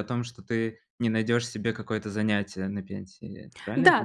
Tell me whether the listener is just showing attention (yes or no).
no